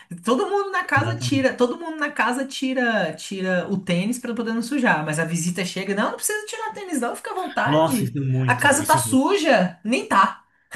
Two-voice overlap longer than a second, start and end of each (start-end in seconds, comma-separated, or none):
7.7-9.2